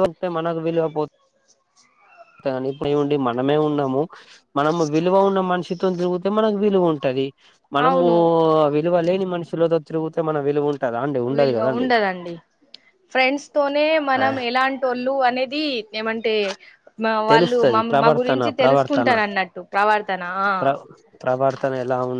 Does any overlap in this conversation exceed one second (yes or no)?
yes